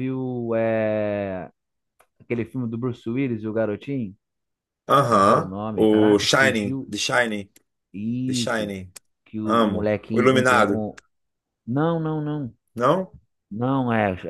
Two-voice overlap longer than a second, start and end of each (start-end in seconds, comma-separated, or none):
5.1-6.9, 9.4-10.8